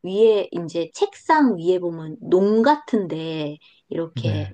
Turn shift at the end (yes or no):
no